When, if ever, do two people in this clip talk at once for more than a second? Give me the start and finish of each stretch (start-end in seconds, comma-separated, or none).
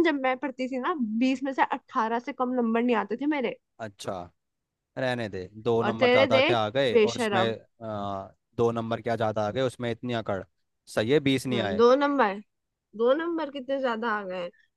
5.8-7.4